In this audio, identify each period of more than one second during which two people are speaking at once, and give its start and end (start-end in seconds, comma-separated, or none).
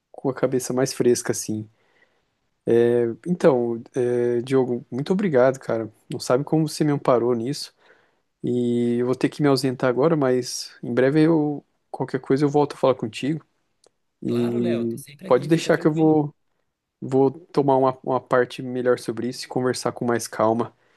14.3-16.2